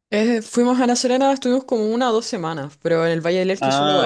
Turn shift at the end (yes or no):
no